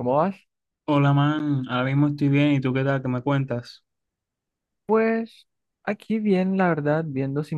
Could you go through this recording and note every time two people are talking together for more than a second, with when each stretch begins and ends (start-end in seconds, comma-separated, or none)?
none